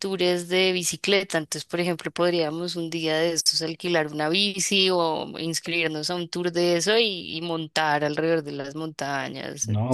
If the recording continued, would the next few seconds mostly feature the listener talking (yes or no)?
yes